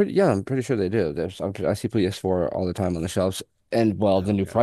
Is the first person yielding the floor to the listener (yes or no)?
no